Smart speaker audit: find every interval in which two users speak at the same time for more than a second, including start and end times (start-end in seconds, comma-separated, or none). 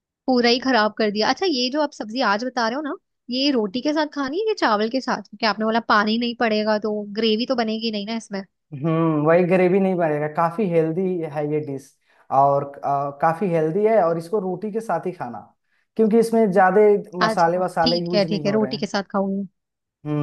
17.3-18.9